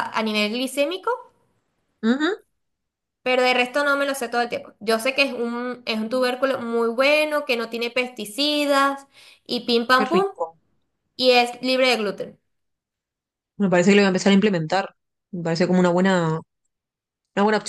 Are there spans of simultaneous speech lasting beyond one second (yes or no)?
no